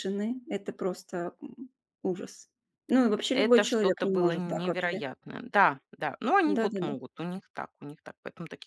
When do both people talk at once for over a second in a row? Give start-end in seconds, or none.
3.3-5.0